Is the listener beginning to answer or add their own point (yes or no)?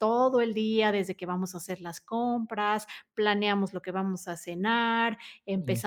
no